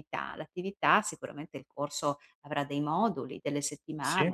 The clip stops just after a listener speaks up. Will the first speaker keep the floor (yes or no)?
yes